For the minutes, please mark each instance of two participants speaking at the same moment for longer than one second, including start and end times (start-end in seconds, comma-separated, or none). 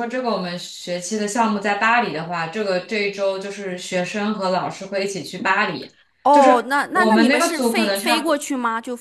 6.3-8.4